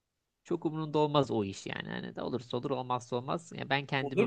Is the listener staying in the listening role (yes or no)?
no